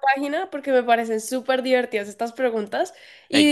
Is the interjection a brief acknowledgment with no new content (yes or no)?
yes